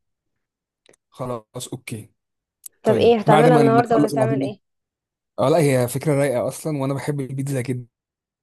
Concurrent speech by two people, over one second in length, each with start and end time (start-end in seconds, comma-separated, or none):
2.8-4.5